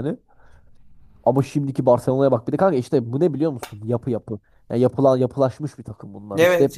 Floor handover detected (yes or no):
yes